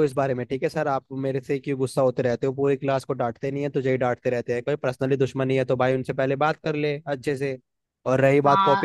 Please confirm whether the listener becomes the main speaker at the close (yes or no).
no